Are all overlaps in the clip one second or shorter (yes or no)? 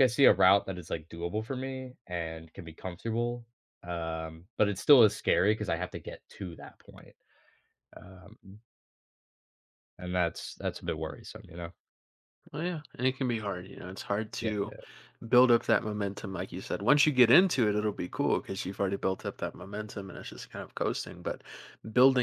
yes